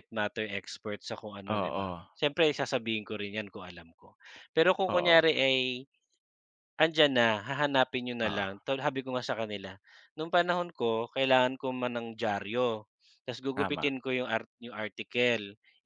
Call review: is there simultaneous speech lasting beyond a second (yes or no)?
no